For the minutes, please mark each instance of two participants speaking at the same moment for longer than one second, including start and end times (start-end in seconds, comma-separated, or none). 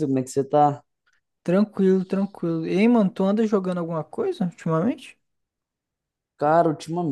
none